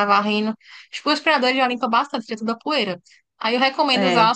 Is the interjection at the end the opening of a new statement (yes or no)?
no